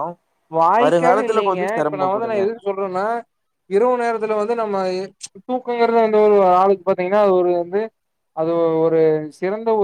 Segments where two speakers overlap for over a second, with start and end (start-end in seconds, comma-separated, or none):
0.8-2.4